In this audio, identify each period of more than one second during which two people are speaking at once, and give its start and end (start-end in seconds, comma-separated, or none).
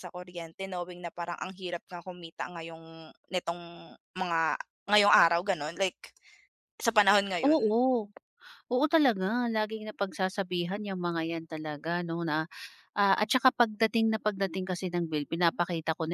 none